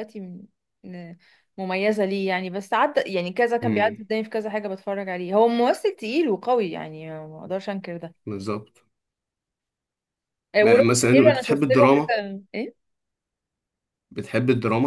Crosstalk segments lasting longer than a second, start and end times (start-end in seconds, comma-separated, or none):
10.6-12.2